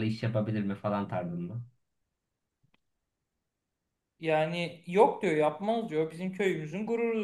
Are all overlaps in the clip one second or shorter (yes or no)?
yes